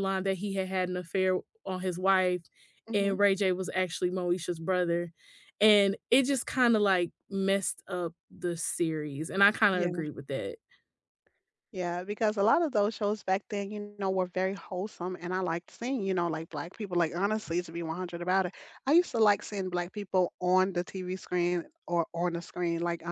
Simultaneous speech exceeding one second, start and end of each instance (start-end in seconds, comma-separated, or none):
none